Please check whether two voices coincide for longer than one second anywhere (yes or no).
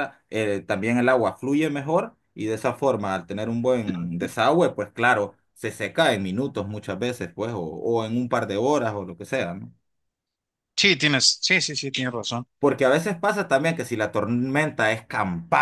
no